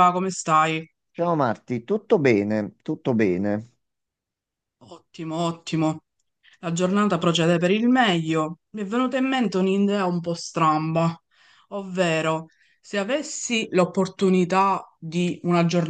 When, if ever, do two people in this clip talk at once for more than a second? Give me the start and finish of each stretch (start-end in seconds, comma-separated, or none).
none